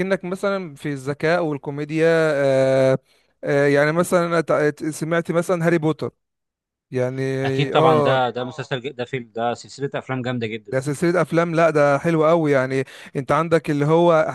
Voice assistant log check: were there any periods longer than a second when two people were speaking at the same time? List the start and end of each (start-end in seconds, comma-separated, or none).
none